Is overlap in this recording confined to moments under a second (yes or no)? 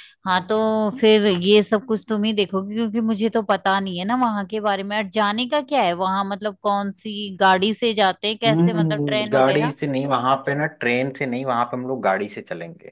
no